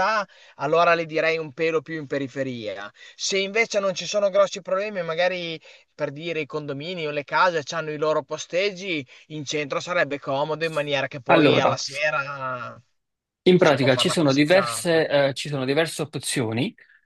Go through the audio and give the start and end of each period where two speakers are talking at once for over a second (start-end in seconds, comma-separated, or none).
13.6-15.2